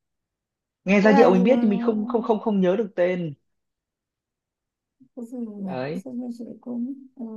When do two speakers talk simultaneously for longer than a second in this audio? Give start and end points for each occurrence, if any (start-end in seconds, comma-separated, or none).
none